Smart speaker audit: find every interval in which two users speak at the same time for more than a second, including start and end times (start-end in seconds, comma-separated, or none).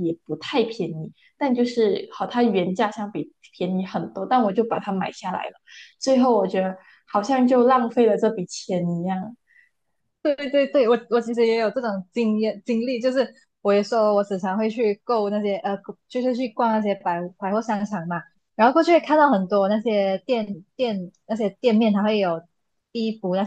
none